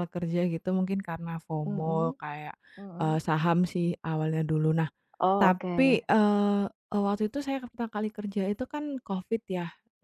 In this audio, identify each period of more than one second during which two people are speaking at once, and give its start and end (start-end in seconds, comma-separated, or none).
none